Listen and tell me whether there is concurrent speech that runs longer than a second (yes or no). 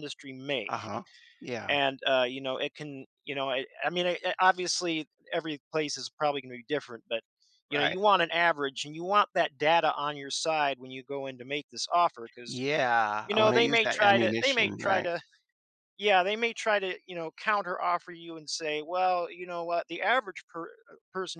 yes